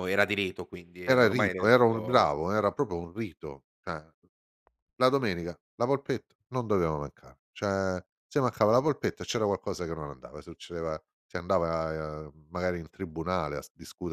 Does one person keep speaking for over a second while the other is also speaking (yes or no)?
yes